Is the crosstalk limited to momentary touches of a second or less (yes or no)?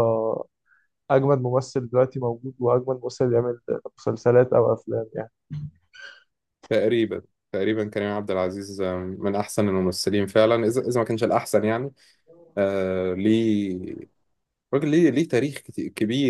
yes